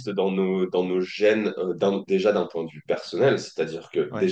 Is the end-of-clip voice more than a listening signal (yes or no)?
no